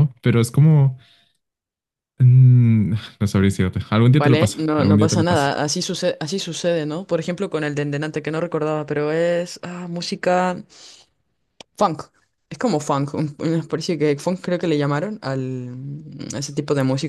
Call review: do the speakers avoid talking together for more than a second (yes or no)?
no